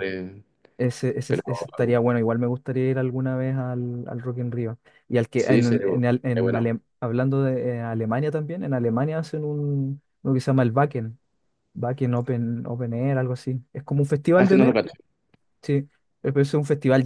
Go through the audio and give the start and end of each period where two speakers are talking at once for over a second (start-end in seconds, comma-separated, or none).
5.3-6.7